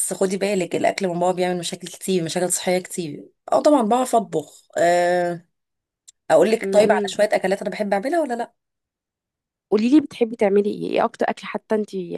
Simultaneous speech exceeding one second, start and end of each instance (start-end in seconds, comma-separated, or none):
none